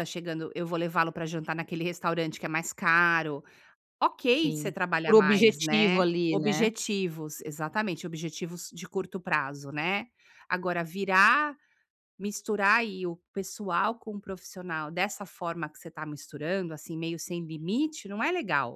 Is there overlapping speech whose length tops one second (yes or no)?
yes